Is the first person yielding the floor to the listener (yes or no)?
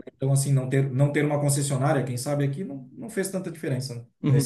yes